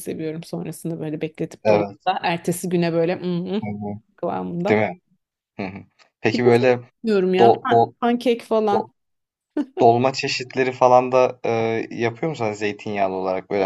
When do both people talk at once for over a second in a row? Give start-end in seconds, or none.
none